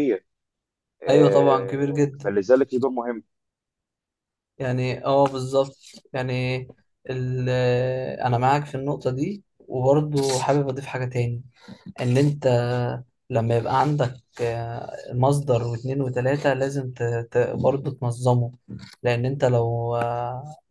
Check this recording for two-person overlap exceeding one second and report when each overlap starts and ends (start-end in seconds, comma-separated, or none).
1.1-2.3